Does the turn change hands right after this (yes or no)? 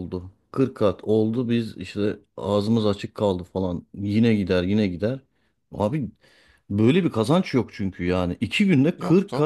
no